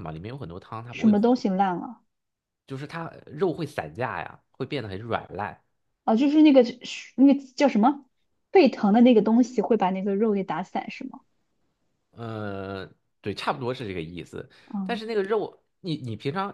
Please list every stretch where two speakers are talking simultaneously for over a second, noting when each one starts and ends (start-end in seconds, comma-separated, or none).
none